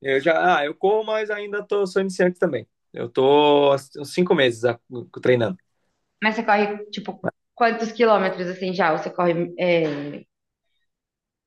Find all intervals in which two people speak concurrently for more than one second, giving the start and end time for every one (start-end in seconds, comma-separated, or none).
none